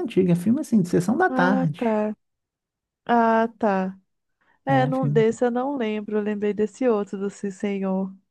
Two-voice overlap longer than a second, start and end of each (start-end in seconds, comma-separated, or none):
none